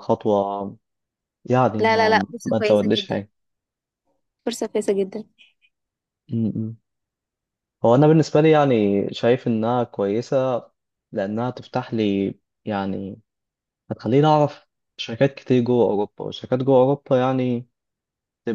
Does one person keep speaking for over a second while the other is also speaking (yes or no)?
yes